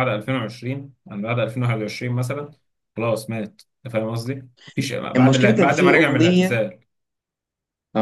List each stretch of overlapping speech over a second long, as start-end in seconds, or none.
5.2-6.6